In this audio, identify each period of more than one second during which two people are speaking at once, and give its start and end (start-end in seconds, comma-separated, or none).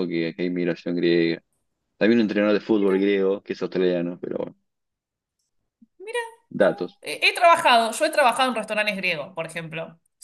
none